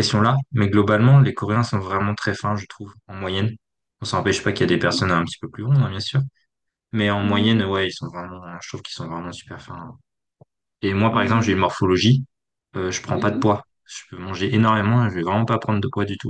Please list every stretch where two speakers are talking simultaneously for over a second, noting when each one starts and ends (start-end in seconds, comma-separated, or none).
none